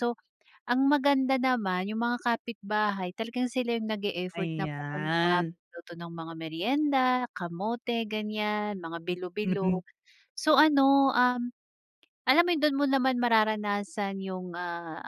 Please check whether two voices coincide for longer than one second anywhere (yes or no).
yes